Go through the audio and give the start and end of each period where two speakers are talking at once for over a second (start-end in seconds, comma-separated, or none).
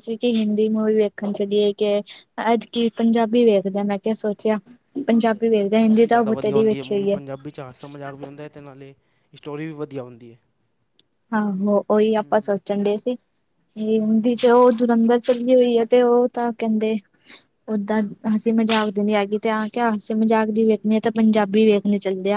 5.1-7.1